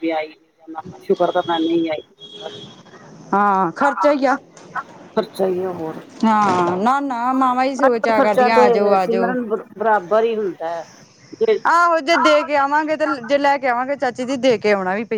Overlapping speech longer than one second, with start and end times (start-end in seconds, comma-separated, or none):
7.8-9.3